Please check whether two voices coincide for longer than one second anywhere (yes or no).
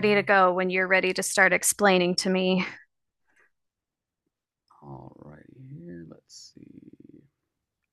no